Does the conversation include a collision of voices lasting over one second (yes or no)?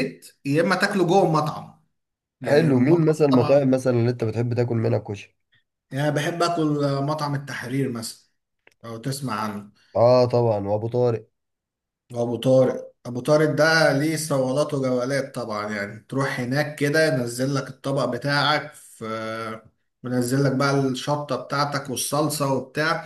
yes